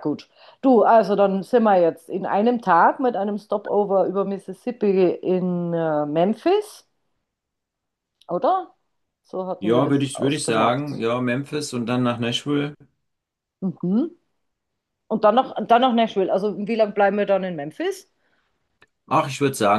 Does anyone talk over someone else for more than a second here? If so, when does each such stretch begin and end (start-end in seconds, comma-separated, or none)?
9.6-11.0